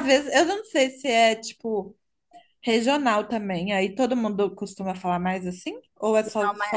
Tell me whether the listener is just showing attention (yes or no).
no